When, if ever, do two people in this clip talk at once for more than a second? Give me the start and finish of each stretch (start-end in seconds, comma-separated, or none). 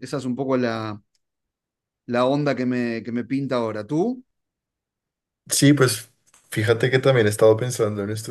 none